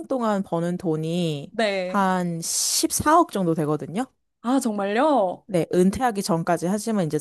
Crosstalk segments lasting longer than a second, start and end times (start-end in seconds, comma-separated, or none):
none